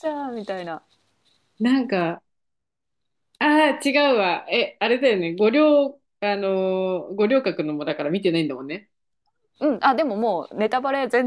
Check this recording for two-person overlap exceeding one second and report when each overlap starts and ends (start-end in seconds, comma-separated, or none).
none